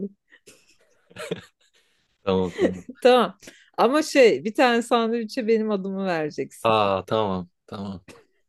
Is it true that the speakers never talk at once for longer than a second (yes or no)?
yes